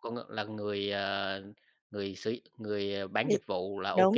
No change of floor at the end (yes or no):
no